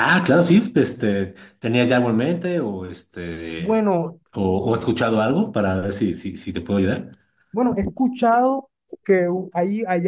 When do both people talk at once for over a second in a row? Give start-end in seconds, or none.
none